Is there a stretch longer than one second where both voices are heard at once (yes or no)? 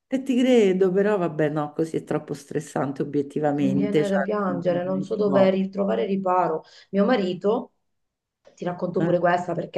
yes